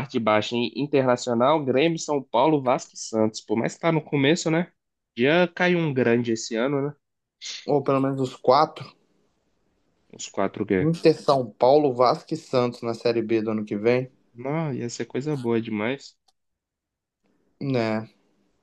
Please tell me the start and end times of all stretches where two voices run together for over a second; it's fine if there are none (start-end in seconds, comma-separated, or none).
none